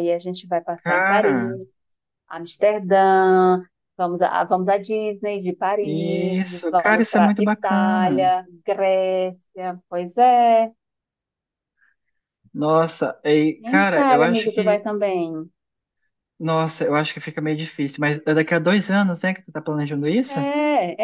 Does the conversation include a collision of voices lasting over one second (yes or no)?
yes